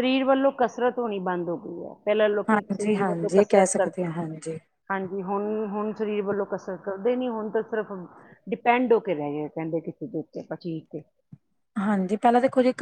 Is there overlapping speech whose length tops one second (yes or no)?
yes